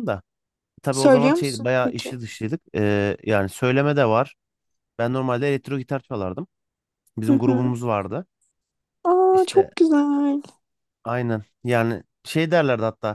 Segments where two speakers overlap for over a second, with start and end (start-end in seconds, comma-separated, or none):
0.9-2.2